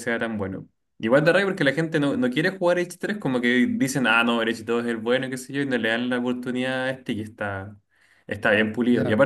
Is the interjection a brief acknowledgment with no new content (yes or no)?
yes